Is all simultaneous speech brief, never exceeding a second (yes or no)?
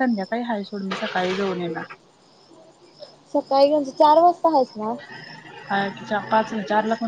yes